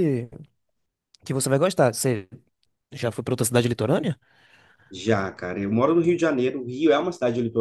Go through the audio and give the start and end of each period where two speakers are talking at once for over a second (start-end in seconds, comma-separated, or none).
none